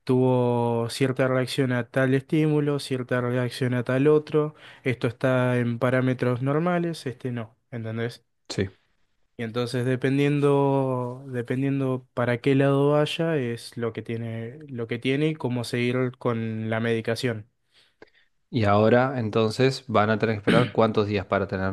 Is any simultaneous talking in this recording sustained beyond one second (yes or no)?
no